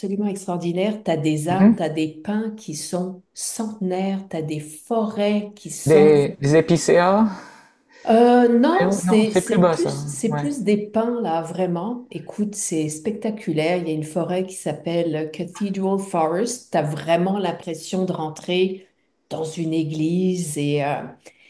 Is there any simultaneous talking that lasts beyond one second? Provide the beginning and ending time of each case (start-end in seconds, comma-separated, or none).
8.8-10.4